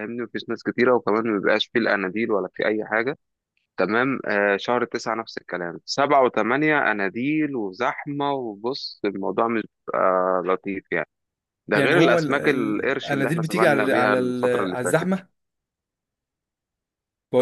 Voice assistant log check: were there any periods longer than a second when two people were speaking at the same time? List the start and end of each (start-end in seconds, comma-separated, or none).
11.8-15.1